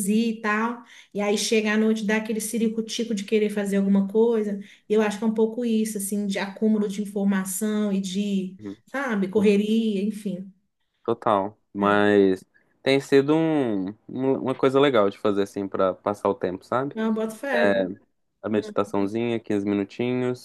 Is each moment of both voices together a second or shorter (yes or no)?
yes